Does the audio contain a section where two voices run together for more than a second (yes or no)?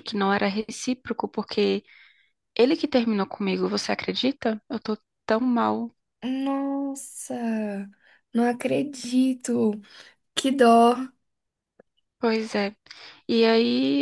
no